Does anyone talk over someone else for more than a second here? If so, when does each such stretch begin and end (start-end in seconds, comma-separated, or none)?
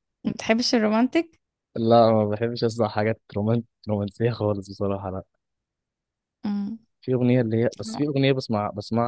none